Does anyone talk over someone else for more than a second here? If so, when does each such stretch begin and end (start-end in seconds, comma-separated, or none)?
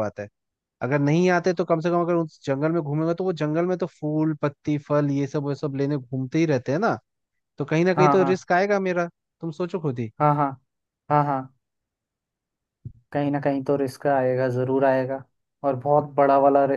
none